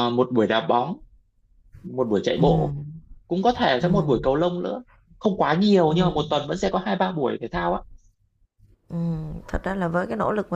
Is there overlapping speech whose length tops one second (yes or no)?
no